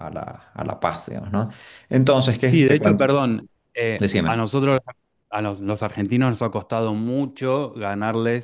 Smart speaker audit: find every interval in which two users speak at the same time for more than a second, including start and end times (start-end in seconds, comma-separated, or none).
none